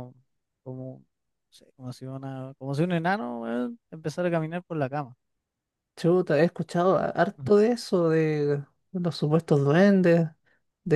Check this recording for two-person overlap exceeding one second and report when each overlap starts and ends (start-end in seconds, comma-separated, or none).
none